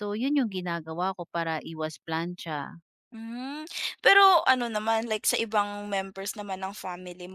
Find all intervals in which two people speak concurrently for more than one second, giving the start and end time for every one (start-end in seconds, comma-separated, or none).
none